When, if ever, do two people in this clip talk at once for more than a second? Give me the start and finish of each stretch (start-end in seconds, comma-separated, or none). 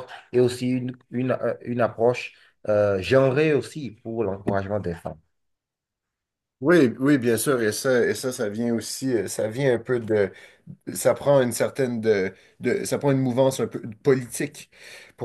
none